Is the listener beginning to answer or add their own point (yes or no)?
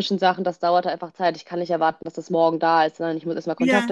no